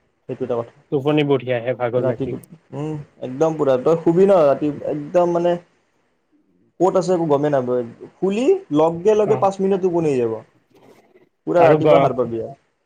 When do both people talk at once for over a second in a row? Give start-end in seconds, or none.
0.9-2.3